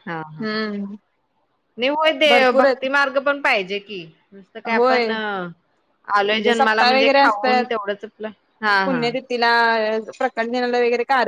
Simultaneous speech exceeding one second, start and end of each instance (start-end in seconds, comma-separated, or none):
6.3-7.7